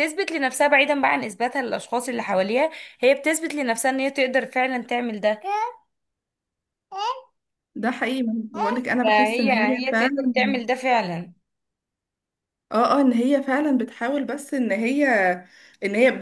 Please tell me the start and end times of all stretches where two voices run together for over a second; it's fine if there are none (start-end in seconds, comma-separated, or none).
9.0-10.3